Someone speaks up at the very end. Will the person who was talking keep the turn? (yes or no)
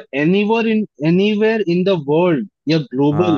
yes